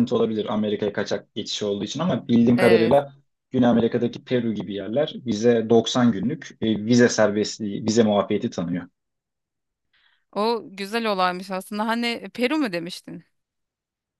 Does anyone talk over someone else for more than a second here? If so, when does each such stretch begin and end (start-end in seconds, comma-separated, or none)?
none